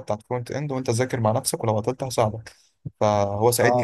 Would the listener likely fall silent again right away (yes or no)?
no